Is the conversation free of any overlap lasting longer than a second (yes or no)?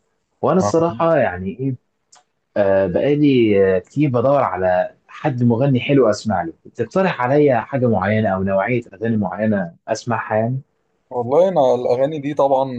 yes